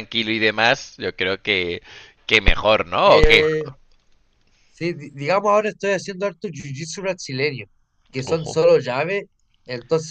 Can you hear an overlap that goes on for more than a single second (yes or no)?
no